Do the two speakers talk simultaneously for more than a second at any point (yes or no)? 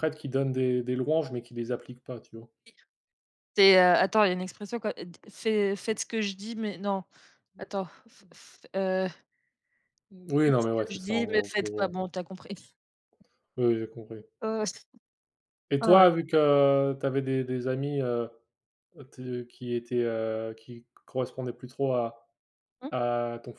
yes